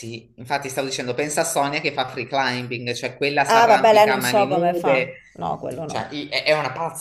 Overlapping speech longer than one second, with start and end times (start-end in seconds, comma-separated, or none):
3.5-5.2